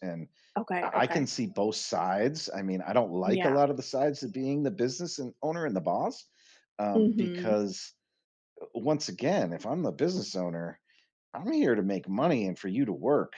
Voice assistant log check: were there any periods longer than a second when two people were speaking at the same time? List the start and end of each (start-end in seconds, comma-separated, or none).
none